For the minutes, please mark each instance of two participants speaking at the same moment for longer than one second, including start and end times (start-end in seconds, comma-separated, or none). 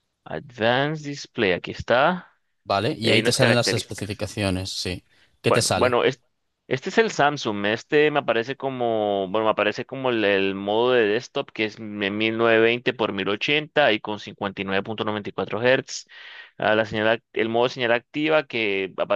3.0-4.2